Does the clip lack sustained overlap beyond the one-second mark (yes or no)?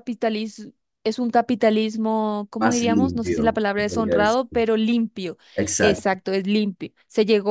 no